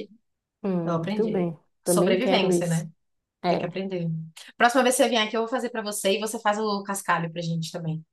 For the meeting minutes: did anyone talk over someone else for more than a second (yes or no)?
yes